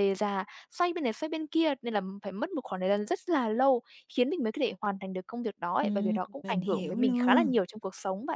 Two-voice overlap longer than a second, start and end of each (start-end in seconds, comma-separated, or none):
5.8-7.5